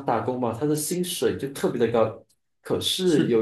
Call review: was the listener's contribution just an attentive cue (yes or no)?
yes